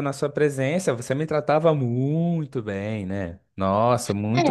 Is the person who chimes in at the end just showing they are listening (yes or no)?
no